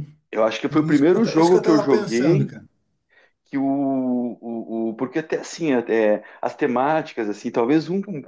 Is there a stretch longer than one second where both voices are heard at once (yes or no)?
yes